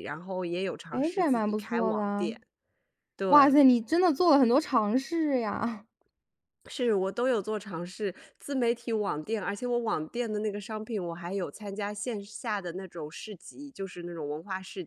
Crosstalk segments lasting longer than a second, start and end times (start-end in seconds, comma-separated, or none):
0.9-2.3